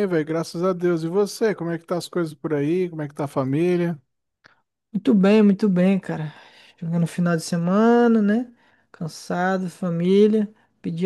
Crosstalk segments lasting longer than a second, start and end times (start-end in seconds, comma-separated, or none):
none